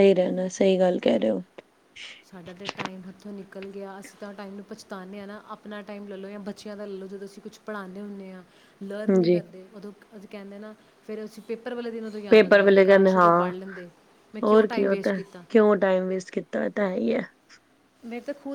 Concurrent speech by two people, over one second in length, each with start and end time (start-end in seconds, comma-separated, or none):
12.3-13.5